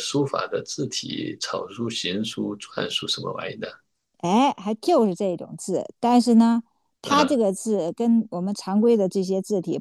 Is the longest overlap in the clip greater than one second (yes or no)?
no